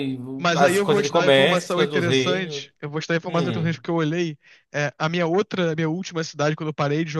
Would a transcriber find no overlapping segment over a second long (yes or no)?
no